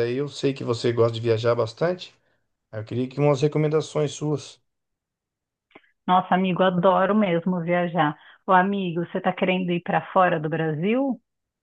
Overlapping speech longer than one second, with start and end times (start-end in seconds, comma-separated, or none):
none